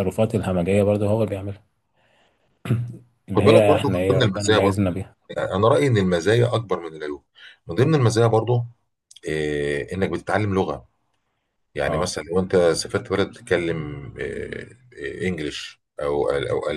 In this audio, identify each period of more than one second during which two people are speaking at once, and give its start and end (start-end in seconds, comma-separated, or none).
3.4-4.8